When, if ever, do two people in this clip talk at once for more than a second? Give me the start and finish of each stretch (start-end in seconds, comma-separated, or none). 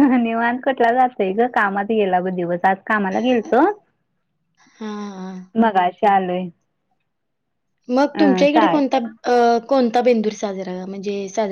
none